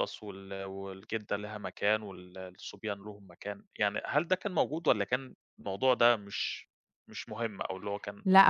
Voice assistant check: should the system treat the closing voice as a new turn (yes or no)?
yes